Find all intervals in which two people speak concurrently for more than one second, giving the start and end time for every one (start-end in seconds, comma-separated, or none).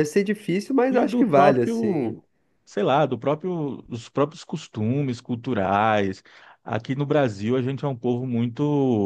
0.9-2.2